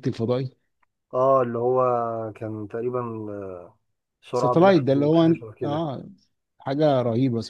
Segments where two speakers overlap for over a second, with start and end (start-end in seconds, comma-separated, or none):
4.3-5.8